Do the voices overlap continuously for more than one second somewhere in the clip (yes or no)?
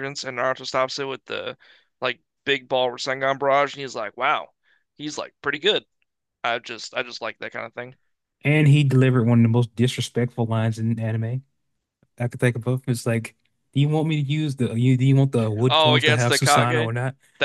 yes